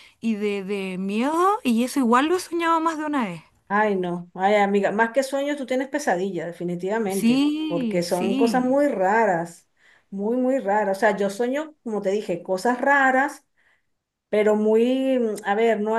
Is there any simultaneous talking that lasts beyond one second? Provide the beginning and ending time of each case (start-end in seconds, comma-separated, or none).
7.1-8.8